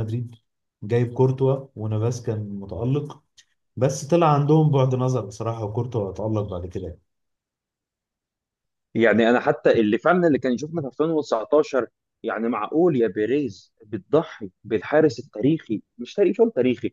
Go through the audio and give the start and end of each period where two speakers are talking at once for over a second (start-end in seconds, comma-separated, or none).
none